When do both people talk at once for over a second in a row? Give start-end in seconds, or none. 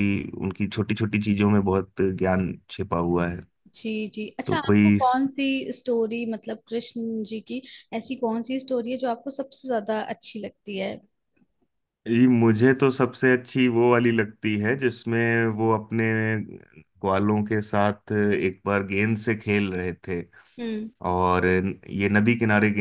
none